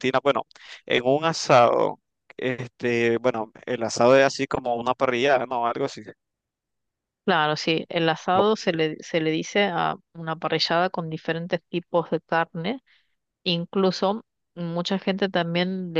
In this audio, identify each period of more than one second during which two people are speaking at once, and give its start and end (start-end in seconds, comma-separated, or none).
none